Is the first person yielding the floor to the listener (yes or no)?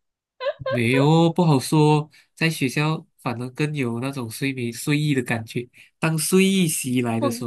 no